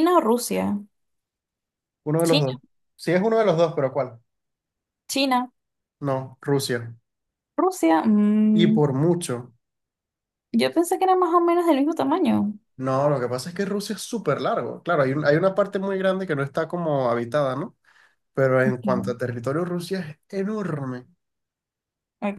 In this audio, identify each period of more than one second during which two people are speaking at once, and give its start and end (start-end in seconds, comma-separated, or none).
none